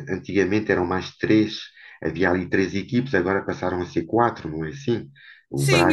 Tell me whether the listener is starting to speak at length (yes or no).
yes